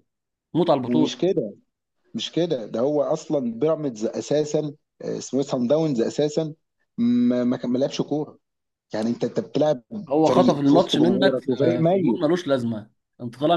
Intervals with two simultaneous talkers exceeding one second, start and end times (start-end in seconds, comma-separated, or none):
10.2-12.2